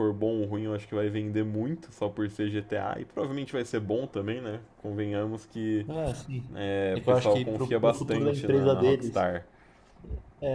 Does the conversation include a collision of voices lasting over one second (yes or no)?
yes